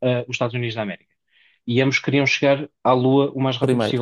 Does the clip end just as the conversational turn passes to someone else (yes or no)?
no